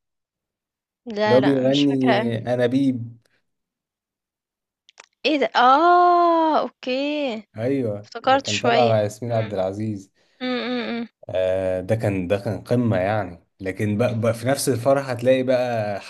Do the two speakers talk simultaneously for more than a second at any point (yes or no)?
yes